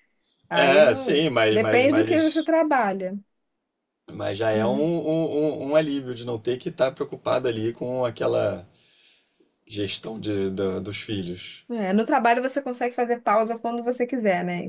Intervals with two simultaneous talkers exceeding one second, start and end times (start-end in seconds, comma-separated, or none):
0.5-2.5